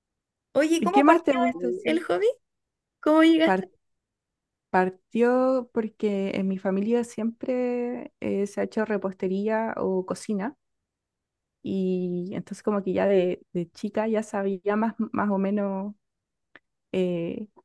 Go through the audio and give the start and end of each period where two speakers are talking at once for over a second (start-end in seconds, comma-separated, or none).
0.8-2.0